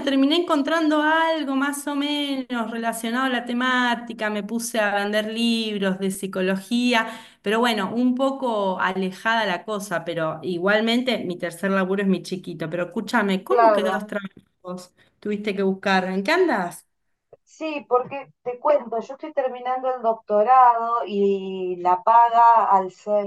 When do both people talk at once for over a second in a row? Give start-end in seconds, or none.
none